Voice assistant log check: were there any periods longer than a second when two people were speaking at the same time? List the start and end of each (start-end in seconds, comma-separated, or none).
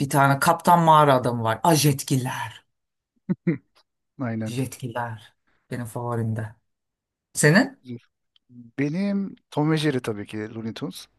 none